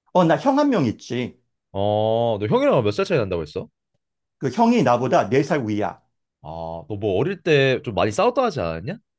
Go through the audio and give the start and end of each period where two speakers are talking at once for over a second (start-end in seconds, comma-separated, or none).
none